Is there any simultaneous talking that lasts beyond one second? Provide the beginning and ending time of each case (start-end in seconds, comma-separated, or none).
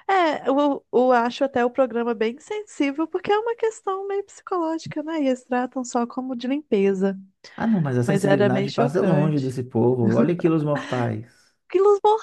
8.0-9.6